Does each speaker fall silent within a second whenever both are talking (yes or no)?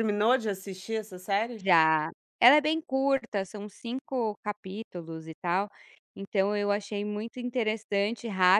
yes